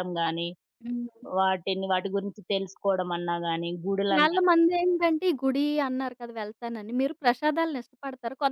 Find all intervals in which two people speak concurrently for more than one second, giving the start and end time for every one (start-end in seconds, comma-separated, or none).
none